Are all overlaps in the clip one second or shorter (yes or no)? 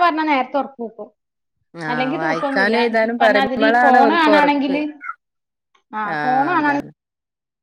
no